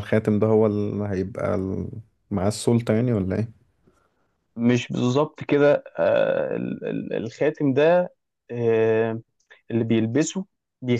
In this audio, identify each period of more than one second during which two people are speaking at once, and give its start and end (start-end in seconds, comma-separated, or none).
none